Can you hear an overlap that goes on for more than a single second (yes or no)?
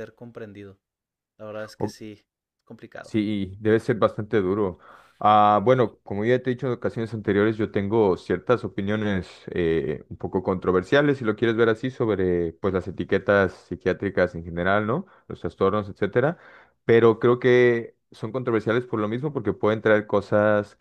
no